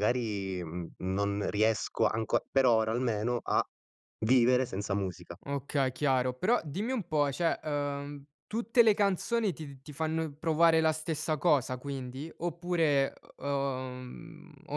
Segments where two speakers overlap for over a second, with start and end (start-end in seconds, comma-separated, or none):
none